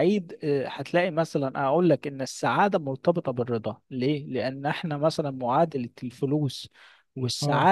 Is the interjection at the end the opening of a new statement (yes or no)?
no